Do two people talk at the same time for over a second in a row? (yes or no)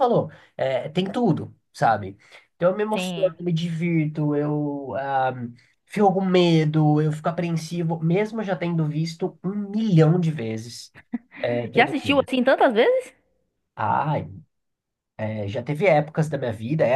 no